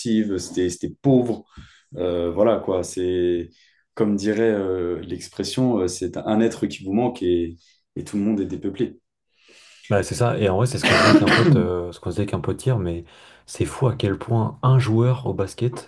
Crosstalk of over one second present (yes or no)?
no